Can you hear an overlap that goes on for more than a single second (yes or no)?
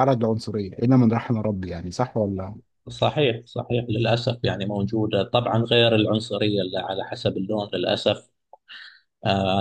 no